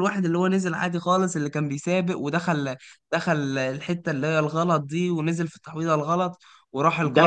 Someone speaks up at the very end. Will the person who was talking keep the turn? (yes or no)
no